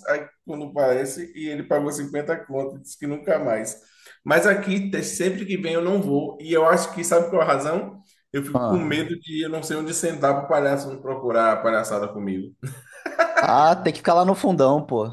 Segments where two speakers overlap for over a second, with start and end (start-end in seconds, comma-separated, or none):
none